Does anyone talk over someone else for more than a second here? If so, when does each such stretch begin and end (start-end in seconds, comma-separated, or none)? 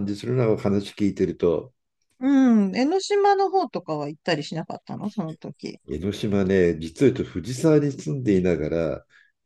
none